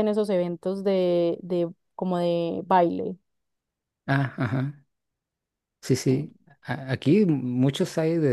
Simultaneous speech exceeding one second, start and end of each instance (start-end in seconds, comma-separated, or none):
none